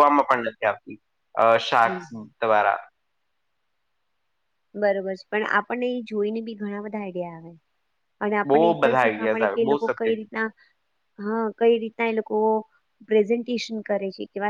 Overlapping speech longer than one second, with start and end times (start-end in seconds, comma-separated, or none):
8.5-10.3